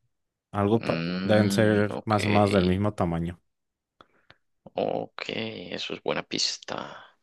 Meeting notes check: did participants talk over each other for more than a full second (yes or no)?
yes